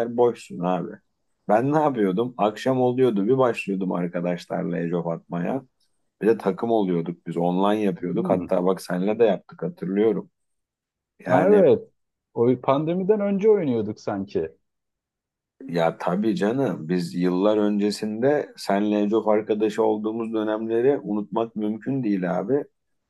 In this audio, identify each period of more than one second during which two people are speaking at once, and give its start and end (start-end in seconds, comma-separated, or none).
none